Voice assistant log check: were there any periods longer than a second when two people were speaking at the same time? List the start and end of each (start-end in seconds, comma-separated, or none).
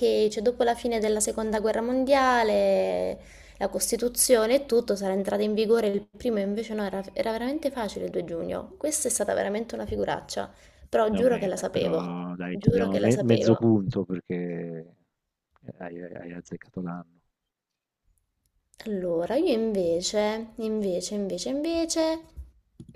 11.1-13.7